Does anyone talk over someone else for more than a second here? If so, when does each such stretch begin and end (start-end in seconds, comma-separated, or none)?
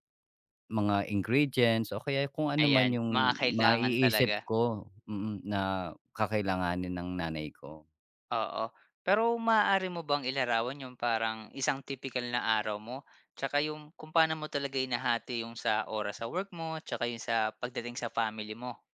2.6-4.4